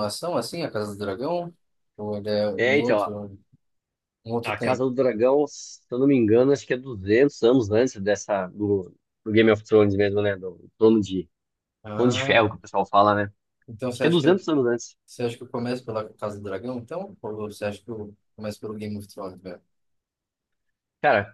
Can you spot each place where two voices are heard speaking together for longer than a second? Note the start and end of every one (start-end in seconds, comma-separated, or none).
none